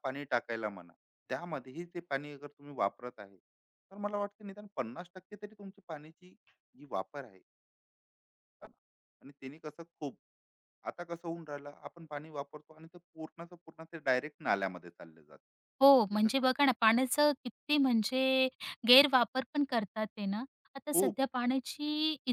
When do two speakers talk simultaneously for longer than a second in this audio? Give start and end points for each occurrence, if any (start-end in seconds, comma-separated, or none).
none